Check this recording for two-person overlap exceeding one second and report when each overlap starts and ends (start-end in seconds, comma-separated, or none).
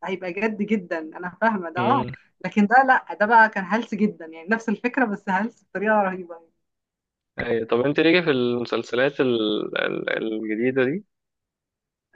none